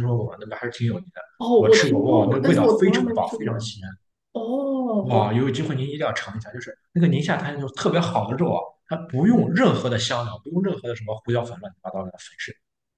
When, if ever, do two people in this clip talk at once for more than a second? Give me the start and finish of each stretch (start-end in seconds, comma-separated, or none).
1.6-3.7